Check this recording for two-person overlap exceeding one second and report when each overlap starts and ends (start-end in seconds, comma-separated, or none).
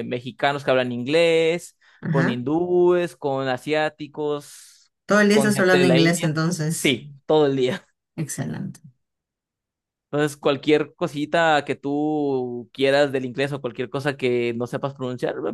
5.3-7.0